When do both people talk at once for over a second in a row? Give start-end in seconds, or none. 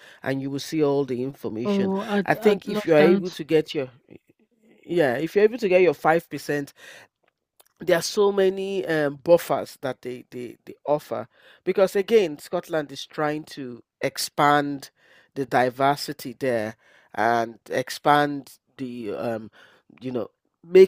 1.6-3.4